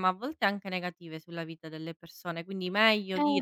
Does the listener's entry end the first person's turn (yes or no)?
no